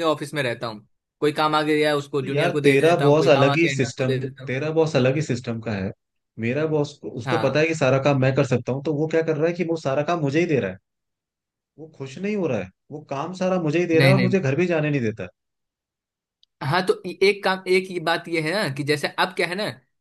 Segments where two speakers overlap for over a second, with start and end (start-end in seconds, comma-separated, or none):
2.2-4.5